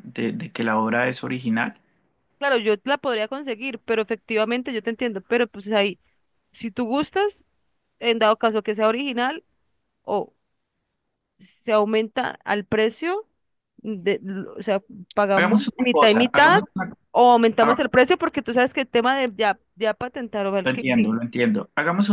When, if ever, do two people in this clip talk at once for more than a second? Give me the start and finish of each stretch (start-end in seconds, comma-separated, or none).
15.3-16.6